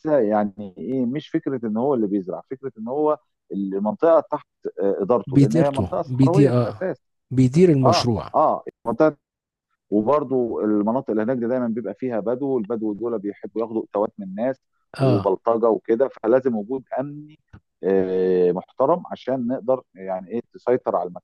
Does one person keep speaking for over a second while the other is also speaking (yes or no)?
yes